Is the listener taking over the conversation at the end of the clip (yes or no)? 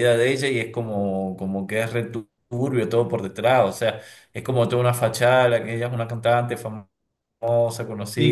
yes